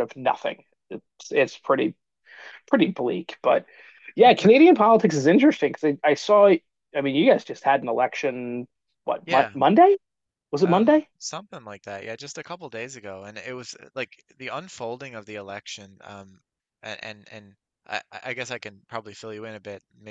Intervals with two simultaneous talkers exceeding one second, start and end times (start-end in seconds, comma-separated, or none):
none